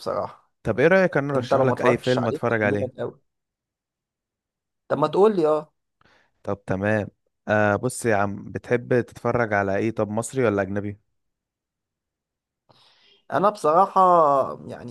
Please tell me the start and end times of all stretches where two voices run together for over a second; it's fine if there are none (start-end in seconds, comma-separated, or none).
1.4-2.9